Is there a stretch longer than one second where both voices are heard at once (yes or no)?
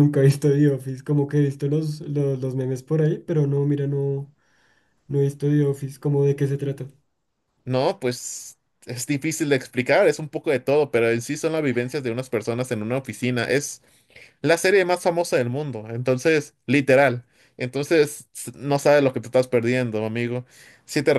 no